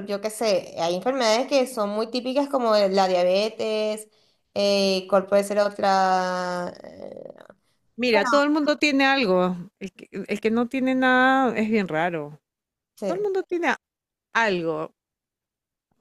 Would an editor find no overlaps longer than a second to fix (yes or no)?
yes